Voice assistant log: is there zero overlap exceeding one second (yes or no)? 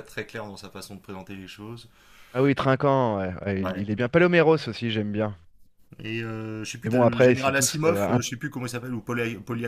no